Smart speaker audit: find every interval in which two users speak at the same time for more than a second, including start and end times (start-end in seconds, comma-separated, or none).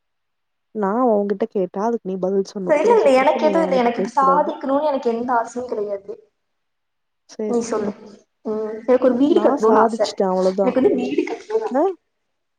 none